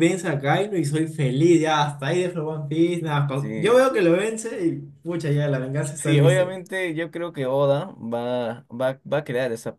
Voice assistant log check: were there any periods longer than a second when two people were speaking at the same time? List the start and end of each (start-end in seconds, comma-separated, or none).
none